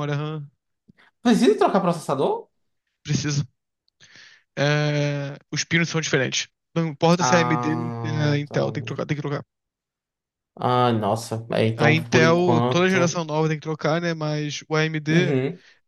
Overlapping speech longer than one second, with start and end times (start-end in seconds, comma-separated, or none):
7.2-8.6, 11.8-13.2